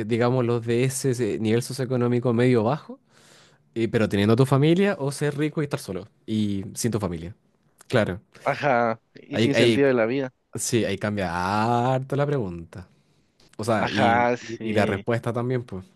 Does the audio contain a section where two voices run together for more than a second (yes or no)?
yes